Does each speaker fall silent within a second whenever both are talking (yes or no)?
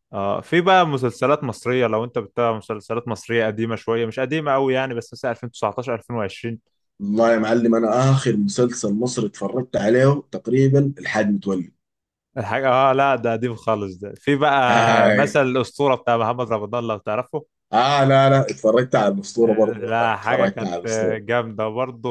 no